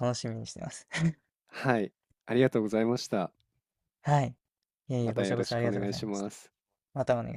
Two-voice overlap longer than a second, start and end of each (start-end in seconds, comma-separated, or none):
5.0-6.3